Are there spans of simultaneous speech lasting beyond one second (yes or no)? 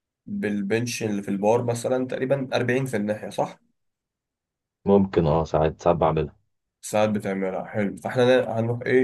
no